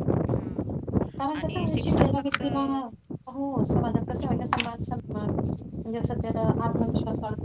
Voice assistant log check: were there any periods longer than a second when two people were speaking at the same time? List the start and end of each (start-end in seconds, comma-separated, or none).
1.2-2.8